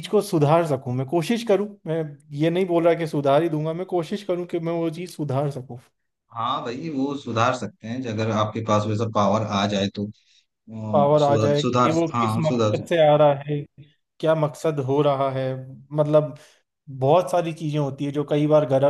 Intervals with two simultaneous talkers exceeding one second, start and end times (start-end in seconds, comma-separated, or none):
10.9-12.8